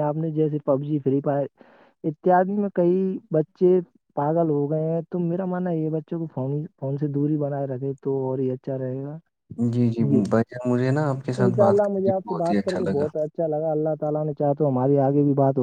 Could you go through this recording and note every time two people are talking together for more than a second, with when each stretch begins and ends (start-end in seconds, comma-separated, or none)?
11.4-13.1